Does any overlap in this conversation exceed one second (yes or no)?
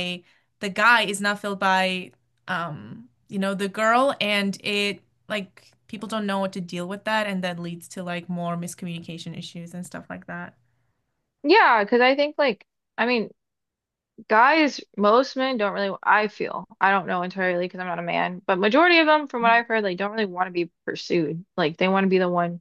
no